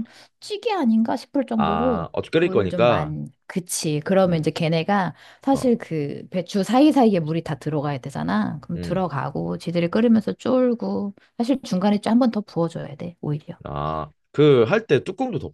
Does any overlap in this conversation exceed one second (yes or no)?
yes